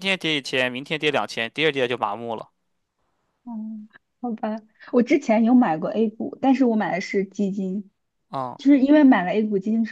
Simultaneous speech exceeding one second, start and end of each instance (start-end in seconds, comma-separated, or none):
none